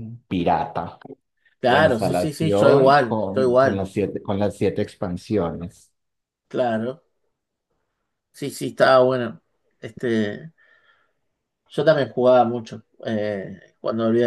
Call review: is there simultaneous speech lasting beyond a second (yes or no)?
yes